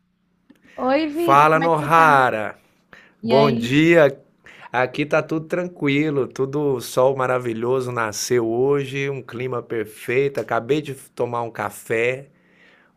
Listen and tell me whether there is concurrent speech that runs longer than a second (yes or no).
yes